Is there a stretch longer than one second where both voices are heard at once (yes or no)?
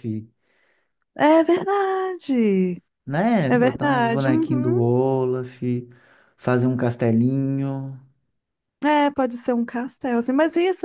yes